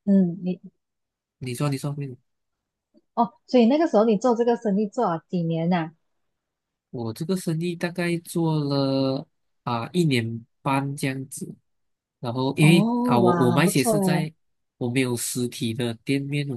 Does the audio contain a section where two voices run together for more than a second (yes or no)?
yes